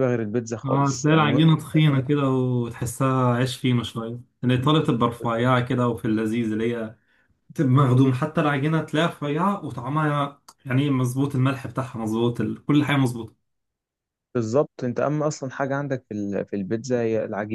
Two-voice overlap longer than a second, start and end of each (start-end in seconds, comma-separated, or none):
0.7-2.0